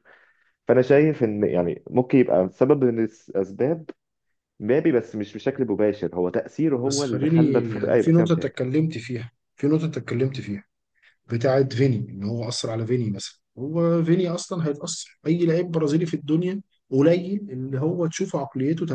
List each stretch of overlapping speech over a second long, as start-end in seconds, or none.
6.8-8.6